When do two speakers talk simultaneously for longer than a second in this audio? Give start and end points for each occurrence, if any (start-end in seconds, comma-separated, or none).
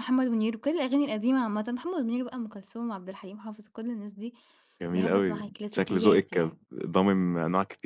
4.9-6.6